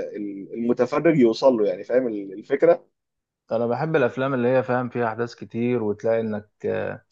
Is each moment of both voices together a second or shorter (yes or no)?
yes